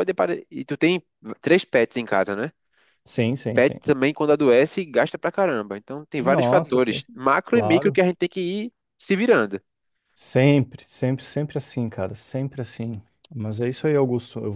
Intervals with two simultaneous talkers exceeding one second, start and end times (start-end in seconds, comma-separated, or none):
6.2-8.0